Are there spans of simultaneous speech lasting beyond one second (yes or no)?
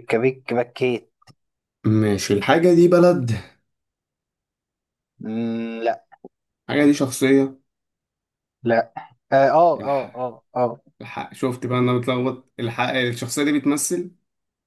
no